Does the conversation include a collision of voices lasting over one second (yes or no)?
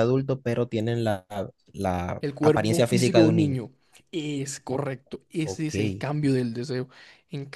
yes